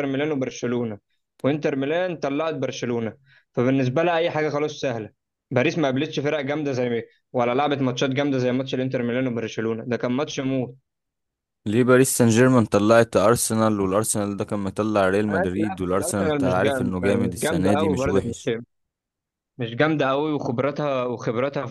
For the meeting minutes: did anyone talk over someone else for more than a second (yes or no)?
yes